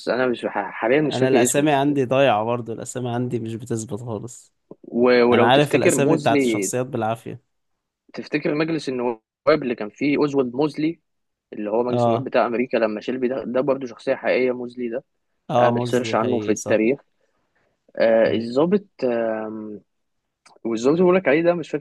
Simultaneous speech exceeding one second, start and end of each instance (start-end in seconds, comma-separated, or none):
5.3-6.7, 15.6-16.9